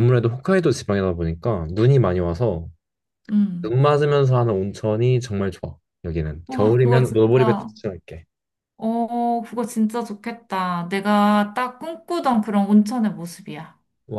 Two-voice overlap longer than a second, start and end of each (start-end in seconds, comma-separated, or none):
6.5-7.7